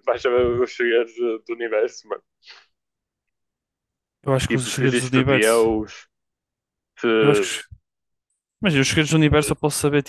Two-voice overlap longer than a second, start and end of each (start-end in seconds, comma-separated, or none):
4.5-5.7